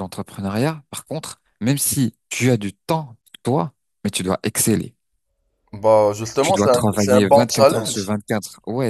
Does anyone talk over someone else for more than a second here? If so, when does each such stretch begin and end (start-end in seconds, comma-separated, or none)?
6.4-8.1